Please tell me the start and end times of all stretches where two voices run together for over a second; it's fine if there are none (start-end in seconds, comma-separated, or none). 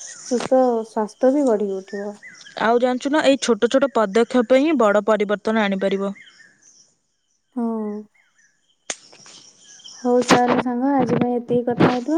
none